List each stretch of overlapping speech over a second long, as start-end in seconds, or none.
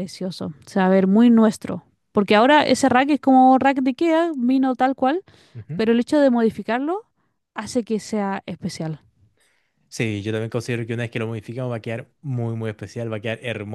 none